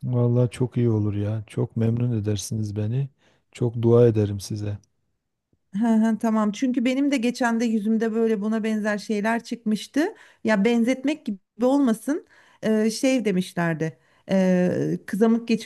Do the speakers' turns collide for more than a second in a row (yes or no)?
no